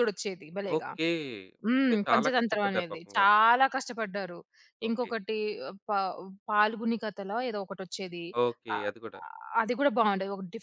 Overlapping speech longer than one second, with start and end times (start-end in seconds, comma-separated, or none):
1.8-3.3